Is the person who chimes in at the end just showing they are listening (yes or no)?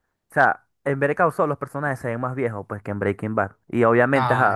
yes